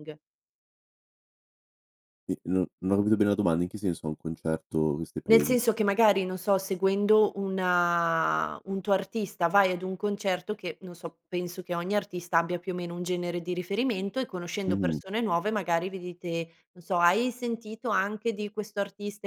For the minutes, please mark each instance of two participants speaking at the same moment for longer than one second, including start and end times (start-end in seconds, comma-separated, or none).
none